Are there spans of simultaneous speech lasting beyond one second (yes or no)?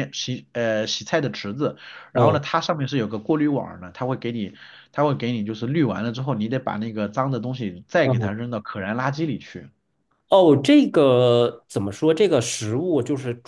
no